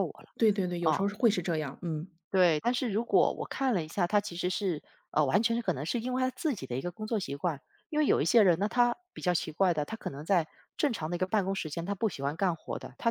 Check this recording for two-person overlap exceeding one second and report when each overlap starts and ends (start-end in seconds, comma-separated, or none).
none